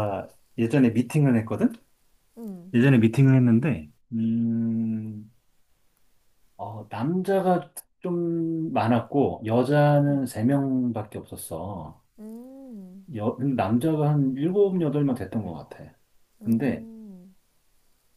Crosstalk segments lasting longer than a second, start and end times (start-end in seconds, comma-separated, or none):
none